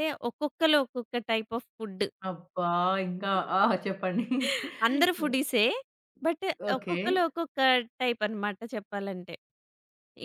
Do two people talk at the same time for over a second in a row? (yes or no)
no